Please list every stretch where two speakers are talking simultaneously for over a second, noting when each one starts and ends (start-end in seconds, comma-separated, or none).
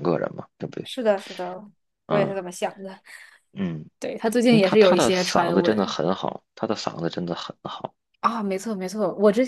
4.5-5.9